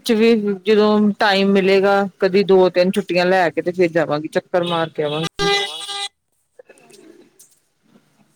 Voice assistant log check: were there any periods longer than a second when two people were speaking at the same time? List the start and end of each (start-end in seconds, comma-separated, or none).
none